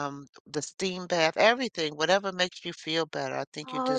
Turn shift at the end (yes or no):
yes